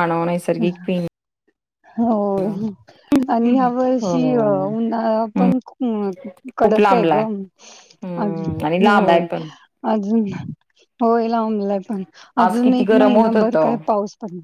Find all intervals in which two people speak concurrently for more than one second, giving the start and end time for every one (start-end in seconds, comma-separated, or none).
12.4-13.8